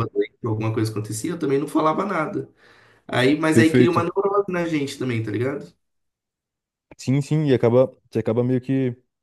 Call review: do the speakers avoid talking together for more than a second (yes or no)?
yes